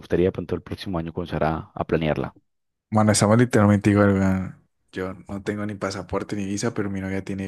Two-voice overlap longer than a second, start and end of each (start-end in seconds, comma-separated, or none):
none